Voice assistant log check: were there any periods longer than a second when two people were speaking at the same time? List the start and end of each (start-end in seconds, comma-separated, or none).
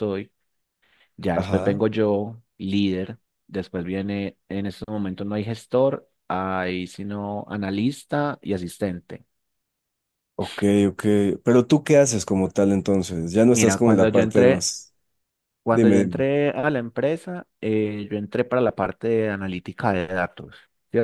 13.5-14.7